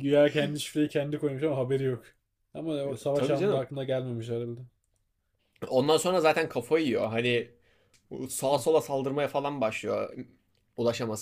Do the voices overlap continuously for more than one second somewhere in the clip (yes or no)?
no